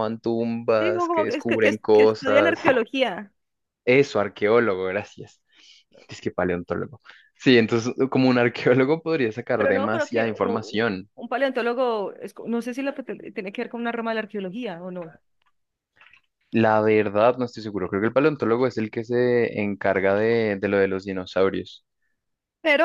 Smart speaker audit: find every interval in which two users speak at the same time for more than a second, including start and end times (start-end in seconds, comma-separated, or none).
0.8-2.6, 9.6-11.1